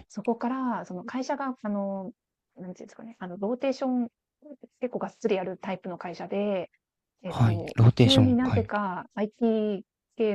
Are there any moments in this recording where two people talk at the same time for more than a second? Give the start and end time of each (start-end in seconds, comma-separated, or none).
7.2-8.7